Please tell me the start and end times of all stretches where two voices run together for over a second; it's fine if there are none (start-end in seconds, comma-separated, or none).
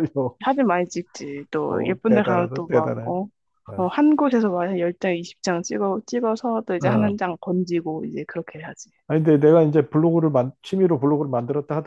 1.7-3.1